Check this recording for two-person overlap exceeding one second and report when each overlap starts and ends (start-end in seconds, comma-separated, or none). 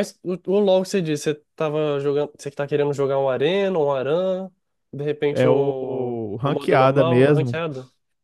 5.3-7.6